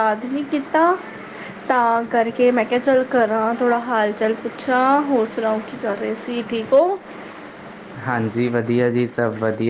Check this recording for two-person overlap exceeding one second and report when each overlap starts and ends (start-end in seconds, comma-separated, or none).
none